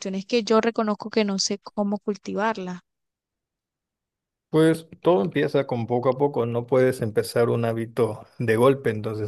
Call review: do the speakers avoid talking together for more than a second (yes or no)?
yes